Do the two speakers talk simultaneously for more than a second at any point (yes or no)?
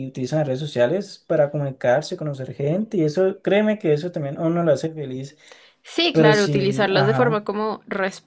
yes